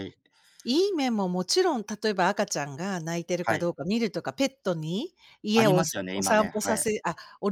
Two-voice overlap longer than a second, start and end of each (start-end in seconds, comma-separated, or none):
5.5-6.8